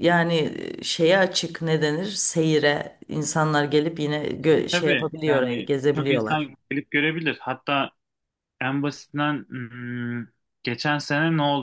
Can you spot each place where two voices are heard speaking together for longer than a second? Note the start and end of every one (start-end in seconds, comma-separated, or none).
4.4-6.5